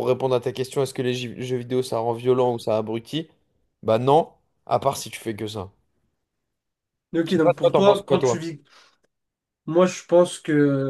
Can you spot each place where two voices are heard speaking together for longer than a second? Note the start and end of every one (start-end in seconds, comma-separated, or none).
7.2-8.4